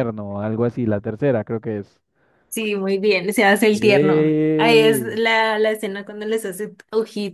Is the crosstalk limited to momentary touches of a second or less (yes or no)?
no